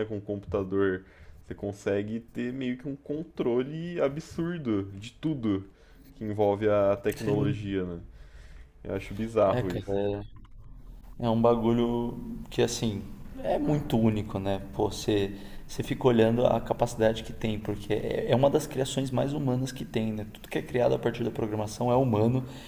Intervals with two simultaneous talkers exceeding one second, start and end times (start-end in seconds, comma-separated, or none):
none